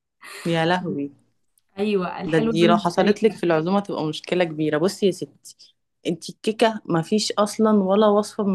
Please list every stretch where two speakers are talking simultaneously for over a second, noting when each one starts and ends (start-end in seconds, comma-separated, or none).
2.3-3.5